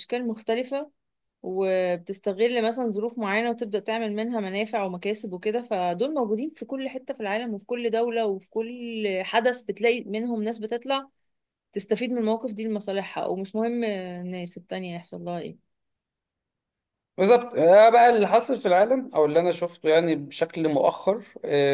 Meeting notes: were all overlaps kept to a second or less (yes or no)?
yes